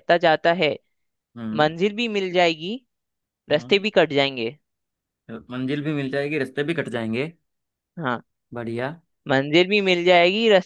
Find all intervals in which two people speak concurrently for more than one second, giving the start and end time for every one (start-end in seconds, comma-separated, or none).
none